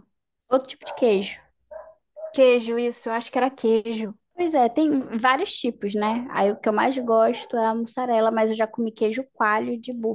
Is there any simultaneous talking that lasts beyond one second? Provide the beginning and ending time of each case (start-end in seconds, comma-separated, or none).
none